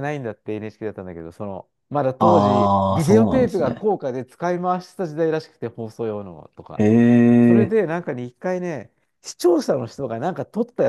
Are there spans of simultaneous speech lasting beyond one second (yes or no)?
yes